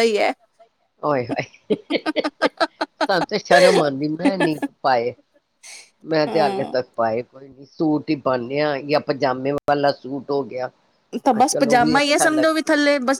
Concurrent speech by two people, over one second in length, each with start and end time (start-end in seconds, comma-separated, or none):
11.4-12.6